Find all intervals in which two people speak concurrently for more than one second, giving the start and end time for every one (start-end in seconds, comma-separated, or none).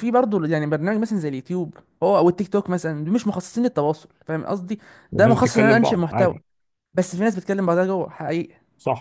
5.1-6.3